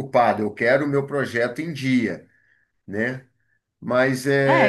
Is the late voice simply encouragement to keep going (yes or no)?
no